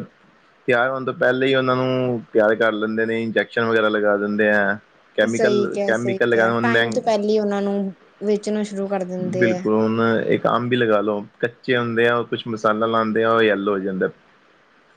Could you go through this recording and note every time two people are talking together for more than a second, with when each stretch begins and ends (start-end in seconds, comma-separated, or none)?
none